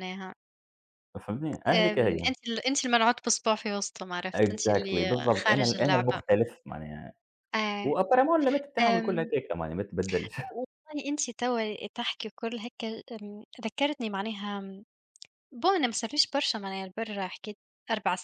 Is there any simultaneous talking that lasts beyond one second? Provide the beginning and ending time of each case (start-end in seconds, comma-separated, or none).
4.4-6.2